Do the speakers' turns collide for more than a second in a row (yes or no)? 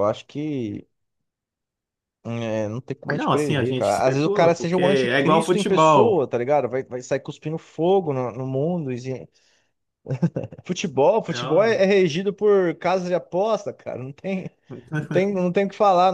yes